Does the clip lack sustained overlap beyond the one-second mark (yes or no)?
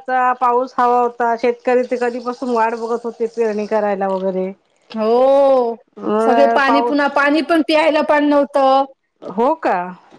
yes